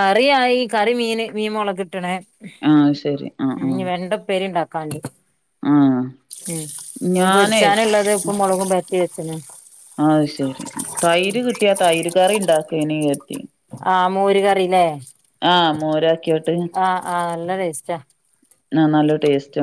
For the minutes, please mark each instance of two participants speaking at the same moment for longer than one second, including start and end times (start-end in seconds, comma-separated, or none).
none